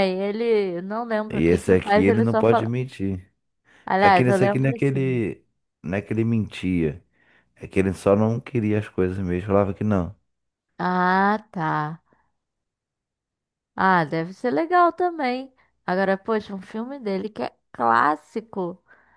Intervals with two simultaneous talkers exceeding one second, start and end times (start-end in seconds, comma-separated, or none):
1.3-2.7, 4.0-5.2